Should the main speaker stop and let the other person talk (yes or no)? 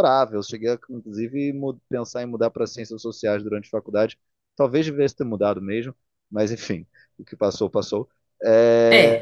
no